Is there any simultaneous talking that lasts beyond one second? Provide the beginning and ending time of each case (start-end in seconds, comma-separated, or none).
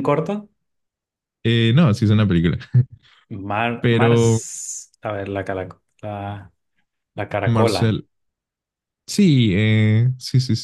none